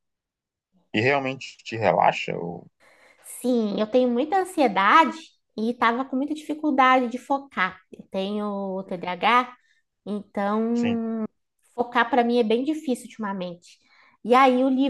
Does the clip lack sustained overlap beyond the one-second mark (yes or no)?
yes